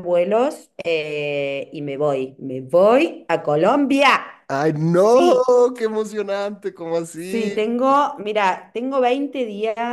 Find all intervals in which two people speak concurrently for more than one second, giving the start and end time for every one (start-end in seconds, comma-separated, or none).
none